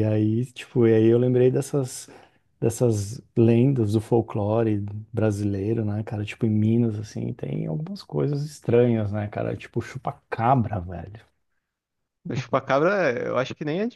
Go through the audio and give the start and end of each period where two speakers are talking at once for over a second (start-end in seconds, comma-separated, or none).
none